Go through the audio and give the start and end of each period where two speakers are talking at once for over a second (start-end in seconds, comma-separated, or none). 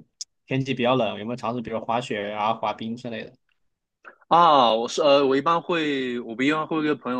none